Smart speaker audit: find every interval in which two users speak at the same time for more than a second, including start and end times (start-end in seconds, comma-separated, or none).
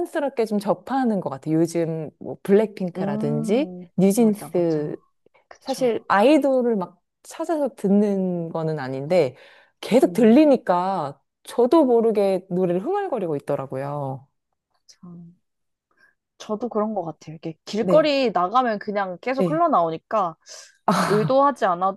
3.0-5.0